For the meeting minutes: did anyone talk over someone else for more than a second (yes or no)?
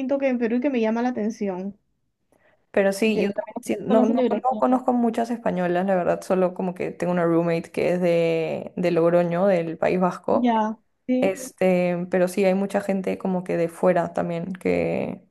yes